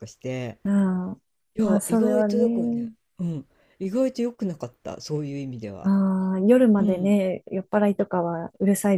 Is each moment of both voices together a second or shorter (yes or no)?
no